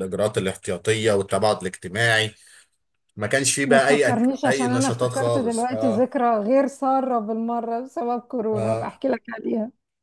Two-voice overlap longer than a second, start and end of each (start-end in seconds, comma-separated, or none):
3.6-6.1